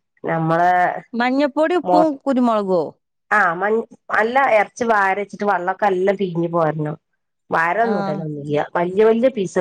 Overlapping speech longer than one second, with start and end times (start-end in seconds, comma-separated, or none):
none